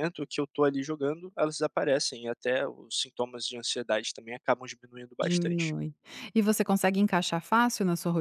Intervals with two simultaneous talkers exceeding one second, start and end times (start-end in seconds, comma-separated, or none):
none